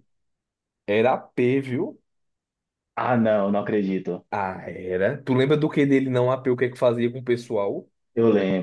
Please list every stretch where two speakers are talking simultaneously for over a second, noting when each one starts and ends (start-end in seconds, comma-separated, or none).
none